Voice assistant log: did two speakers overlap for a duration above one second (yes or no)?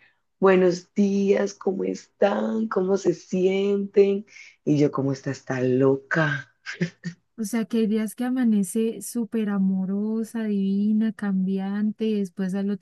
no